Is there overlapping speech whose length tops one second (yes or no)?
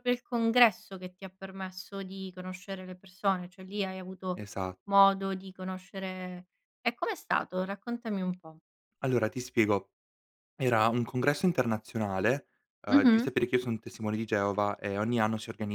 no